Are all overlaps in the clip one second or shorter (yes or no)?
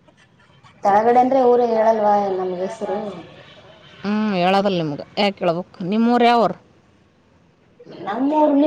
yes